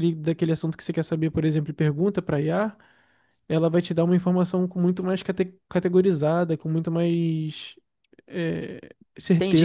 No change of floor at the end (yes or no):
no